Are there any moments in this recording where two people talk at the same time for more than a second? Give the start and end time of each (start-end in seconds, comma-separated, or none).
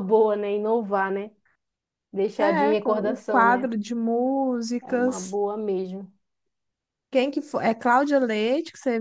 2.4-3.7